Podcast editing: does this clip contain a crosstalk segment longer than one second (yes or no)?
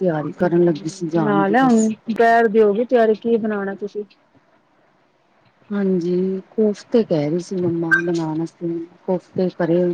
no